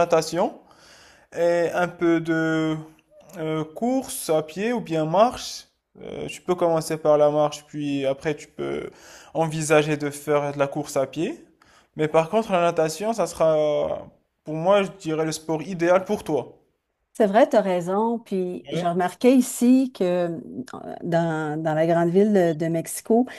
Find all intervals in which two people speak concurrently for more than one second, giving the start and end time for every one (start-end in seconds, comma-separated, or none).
none